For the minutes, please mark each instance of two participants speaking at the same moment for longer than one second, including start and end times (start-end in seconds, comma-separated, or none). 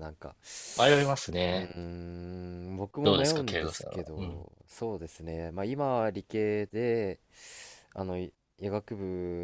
3.0-4.5